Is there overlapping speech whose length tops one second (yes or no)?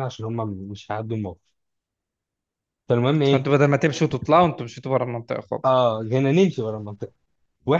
no